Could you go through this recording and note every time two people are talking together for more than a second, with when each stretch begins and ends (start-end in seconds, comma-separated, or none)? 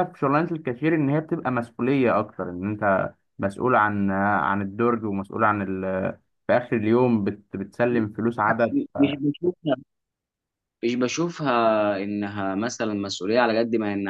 none